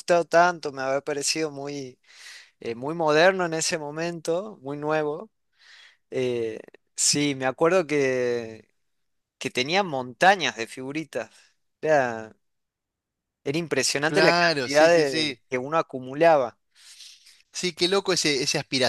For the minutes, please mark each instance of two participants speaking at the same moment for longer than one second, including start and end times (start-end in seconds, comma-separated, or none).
14.1-15.4